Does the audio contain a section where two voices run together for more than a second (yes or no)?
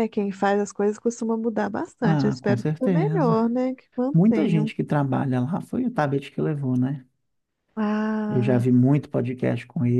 yes